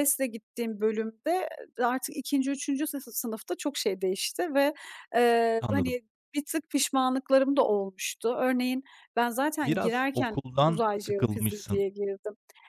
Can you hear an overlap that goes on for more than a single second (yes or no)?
yes